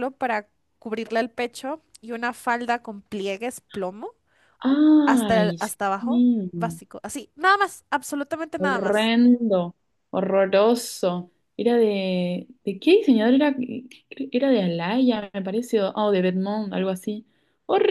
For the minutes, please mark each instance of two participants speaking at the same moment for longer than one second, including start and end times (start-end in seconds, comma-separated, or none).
5.0-6.5